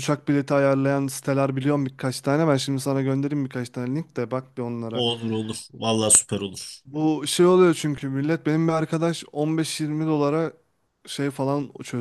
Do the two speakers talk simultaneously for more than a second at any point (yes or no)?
no